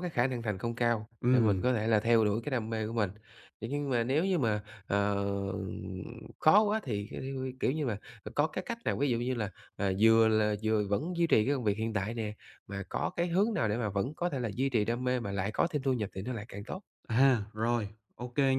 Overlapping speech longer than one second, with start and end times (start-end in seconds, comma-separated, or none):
none